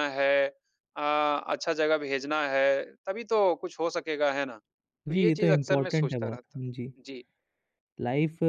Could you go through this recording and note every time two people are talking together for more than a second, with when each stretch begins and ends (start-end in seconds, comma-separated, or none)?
5.1-6.6